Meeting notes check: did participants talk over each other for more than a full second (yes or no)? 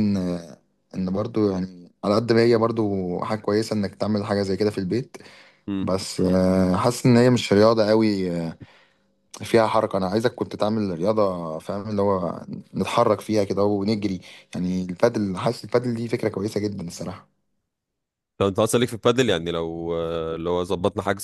no